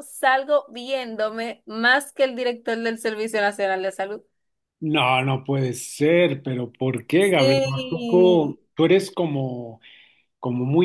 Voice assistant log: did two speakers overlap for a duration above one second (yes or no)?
yes